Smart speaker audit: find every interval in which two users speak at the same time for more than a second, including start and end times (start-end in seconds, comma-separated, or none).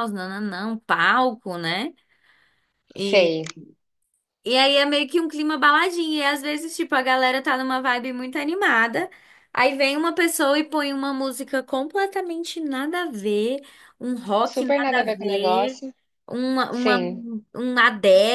14.5-15.8